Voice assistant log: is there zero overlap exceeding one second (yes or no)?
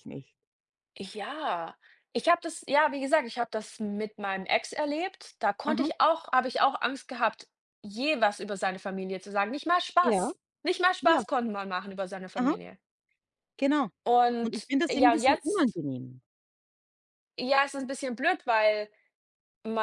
no